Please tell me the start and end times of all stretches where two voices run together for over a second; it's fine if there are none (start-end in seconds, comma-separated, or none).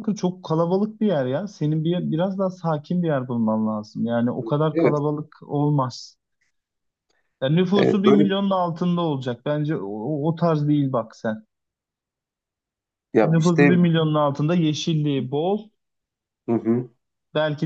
none